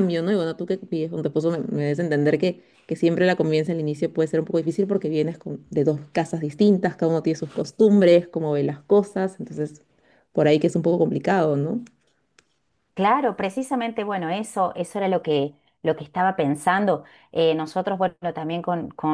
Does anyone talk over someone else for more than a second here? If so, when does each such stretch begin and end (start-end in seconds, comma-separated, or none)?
none